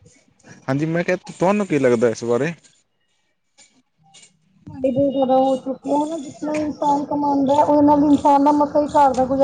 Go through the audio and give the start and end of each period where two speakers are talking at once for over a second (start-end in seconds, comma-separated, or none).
none